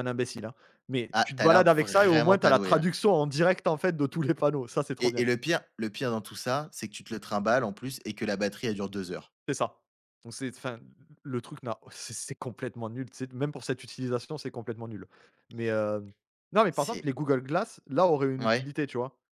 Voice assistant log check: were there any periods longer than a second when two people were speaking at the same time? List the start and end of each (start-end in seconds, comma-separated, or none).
1.1-2.9